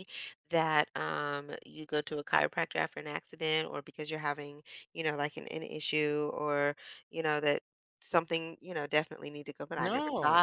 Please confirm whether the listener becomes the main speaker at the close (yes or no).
no